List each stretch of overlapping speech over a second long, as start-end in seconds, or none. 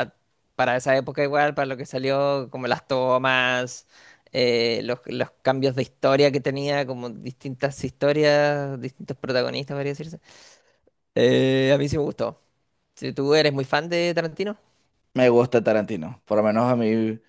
none